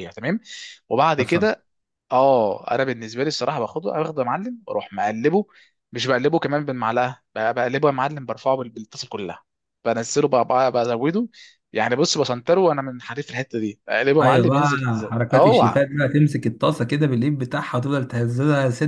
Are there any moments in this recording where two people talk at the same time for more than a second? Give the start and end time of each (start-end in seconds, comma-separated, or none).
14.2-15.8